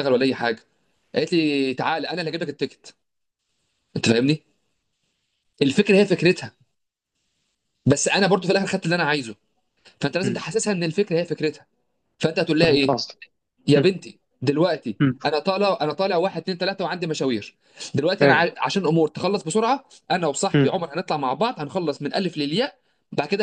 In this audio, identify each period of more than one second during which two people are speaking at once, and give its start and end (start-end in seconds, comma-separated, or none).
none